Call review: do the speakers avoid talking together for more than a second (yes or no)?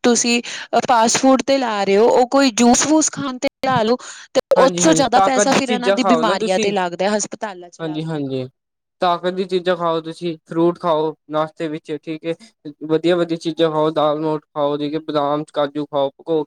no